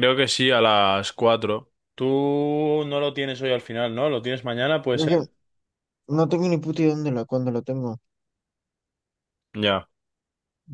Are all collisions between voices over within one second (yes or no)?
yes